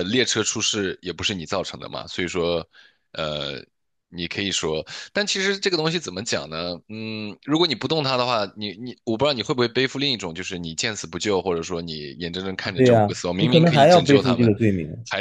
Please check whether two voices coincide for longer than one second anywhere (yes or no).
yes